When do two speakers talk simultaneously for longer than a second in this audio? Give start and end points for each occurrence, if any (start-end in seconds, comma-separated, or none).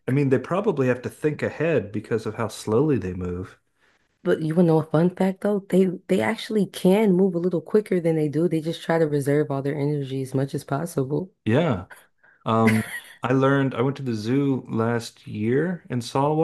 none